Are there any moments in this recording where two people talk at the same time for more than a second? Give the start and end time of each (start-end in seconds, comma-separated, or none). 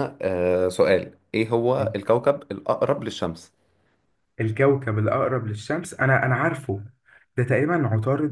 none